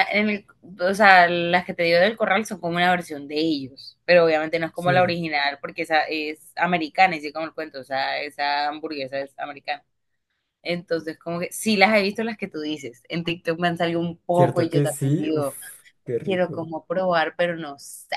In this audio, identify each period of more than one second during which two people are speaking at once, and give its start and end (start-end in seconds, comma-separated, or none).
14.3-15.6